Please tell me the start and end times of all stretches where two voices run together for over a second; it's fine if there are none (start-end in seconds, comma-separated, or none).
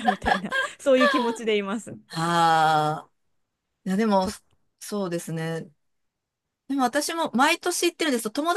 none